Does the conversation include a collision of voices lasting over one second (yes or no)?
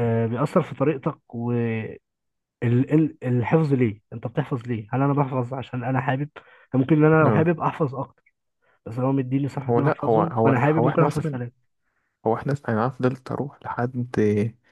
yes